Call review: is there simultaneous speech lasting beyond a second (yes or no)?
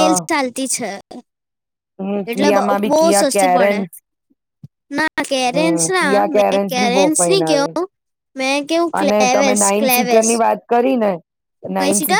yes